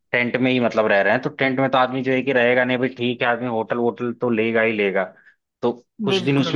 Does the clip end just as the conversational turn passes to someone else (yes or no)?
no